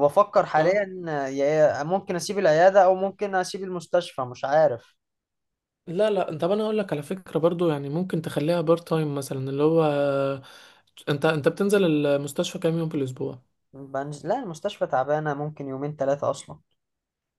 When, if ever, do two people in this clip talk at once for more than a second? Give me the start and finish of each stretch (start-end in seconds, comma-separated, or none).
none